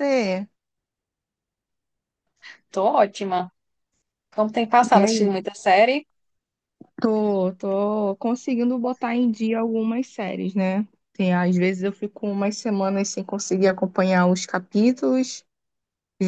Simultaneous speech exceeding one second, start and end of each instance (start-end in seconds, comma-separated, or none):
none